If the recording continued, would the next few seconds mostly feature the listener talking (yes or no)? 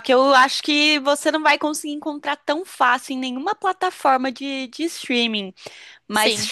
no